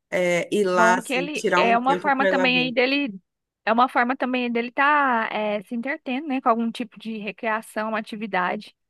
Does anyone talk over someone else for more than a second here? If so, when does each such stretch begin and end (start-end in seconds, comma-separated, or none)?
0.6-2.8